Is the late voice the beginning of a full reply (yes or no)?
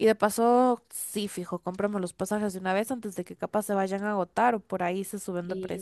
yes